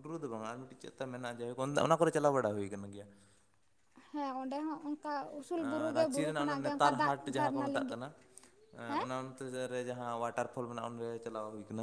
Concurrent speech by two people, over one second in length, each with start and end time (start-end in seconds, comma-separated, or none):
5.6-8.0